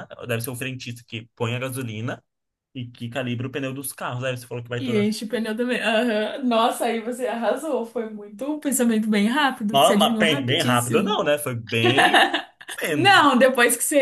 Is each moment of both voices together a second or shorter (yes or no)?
no